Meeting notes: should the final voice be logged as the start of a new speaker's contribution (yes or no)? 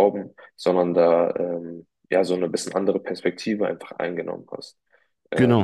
yes